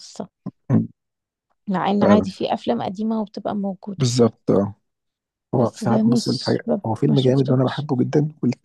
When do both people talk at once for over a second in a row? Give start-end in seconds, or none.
5.6-7.9